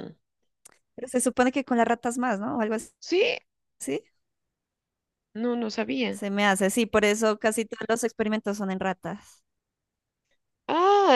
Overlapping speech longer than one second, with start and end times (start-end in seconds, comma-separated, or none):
none